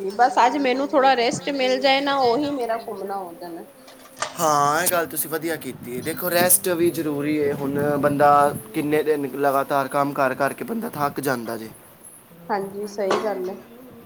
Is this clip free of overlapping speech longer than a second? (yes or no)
yes